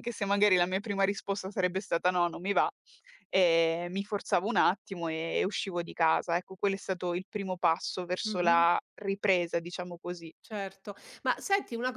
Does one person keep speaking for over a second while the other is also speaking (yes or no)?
no